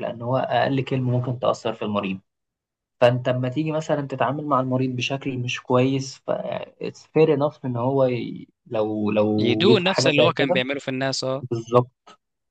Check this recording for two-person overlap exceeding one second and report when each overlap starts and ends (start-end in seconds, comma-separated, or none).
9.4-10.6